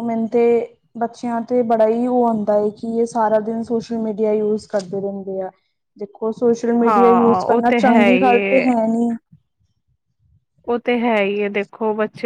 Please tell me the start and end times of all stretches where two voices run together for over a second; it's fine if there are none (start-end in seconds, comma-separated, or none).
6.8-8.6